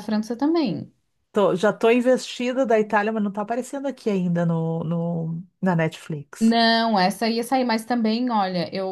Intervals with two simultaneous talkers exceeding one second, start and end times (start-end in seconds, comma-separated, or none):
none